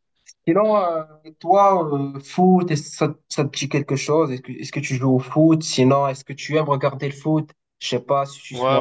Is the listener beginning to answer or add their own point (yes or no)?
yes